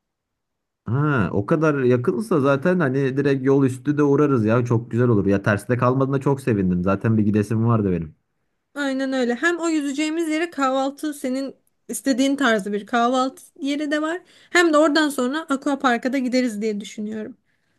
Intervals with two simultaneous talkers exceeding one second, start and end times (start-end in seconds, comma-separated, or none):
none